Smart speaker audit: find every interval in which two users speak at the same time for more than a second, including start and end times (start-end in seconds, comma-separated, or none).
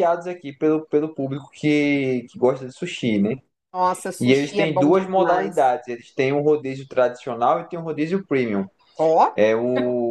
4.2-5.7